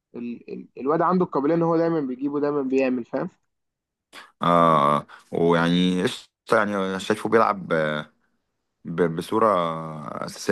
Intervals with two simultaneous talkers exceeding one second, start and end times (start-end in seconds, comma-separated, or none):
none